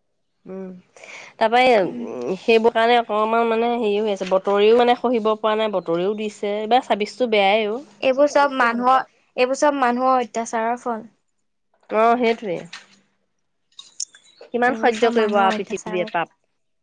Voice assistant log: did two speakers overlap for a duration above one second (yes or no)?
yes